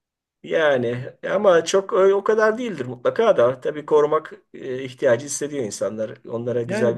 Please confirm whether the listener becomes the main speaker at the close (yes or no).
yes